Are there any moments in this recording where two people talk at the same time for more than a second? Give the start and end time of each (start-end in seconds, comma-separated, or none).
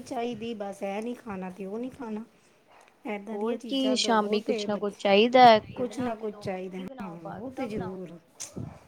3.3-4.9, 5.8-8.0